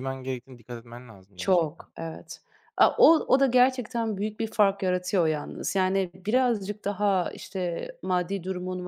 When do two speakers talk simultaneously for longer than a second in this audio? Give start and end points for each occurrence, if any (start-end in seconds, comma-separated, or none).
none